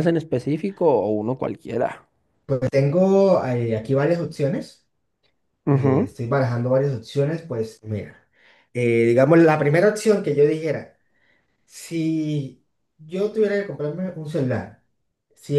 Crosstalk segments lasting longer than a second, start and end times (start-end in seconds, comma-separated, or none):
none